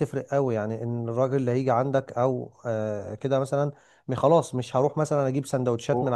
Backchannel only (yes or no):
yes